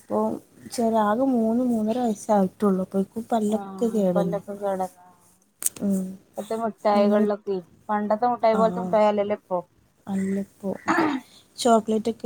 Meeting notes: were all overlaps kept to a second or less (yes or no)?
yes